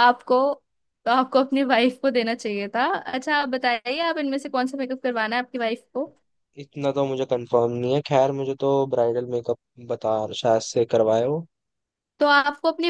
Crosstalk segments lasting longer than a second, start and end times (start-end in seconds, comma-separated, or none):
none